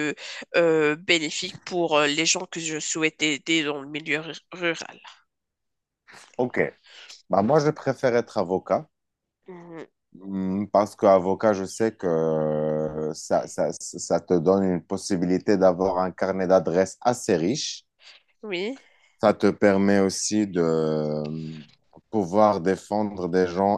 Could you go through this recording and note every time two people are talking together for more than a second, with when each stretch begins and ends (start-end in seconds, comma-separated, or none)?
none